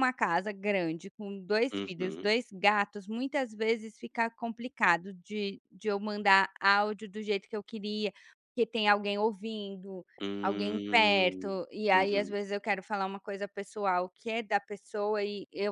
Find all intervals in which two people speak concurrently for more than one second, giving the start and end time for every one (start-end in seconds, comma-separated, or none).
10.4-12.3